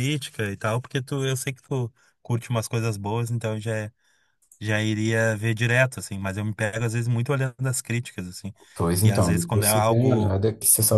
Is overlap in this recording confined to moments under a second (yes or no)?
no